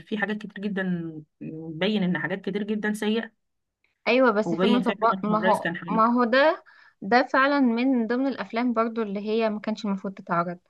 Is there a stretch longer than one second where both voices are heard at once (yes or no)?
yes